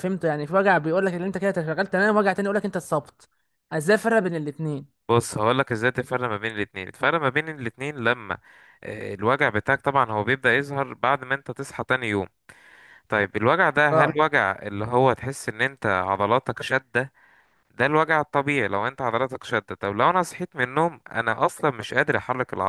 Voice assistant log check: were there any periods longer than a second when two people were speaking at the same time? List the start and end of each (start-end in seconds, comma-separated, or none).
none